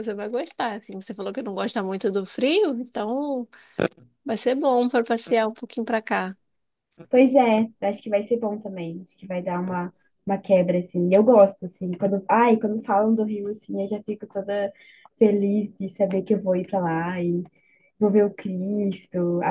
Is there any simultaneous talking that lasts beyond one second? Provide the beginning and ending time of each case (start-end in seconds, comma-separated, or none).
none